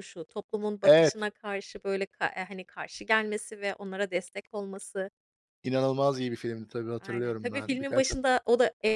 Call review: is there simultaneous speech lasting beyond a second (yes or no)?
yes